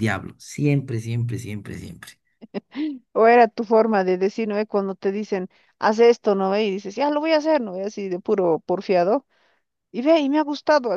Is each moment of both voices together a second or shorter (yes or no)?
yes